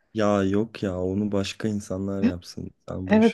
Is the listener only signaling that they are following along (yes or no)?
no